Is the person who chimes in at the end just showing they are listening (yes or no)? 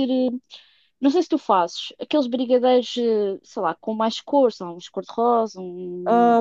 no